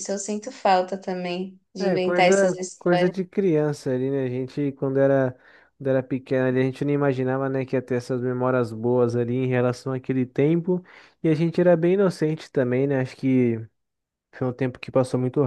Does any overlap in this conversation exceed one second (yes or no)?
yes